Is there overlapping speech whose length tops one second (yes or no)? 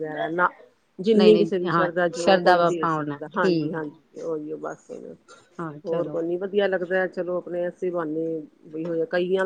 yes